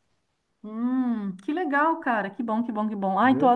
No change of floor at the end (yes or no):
yes